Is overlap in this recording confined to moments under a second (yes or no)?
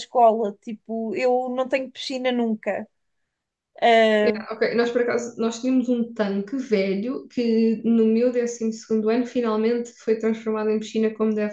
yes